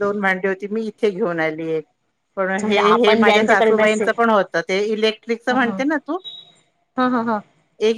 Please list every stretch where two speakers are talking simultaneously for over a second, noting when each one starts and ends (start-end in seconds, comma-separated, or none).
2.4-4.1